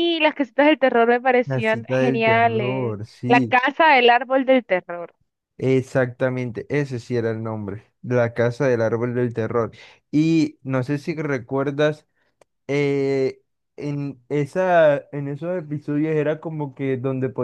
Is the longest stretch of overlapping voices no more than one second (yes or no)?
no